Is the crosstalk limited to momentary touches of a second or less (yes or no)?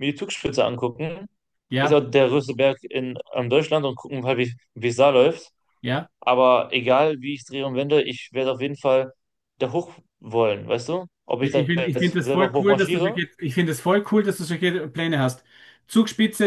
no